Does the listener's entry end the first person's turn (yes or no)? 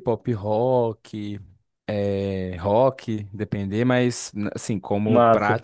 no